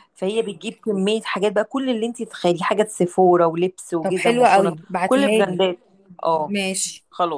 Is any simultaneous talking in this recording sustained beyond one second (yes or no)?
yes